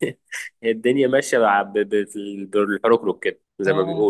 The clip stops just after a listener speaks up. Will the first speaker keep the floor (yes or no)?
no